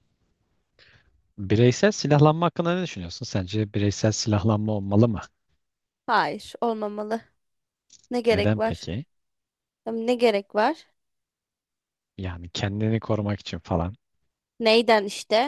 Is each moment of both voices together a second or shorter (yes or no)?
yes